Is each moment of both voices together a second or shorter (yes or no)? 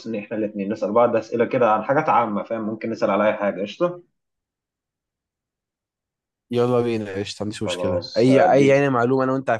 no